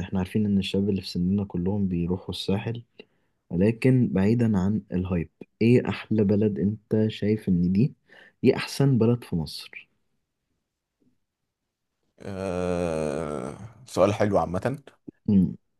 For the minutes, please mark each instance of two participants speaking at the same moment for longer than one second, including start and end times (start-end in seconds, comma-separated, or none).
none